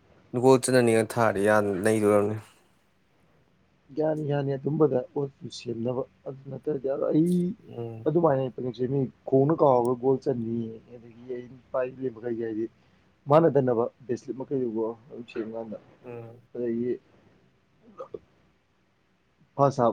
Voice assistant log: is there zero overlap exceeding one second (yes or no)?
yes